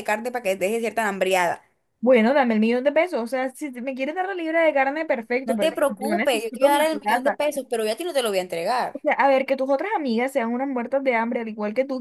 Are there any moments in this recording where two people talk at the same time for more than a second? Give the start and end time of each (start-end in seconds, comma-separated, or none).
5.5-7.4